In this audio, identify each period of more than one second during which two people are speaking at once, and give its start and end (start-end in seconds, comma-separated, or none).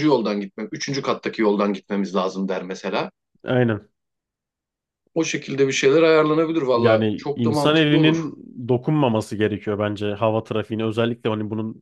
6.7-8.2